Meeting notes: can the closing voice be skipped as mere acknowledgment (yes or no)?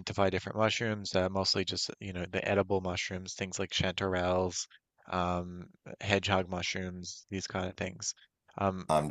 yes